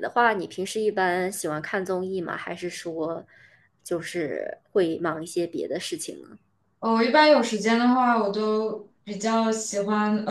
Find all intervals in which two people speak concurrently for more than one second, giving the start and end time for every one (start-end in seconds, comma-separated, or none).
none